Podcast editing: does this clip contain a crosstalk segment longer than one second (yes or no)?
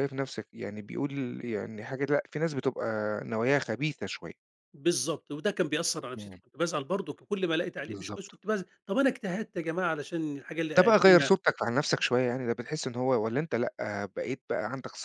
no